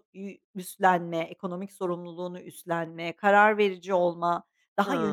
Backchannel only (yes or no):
yes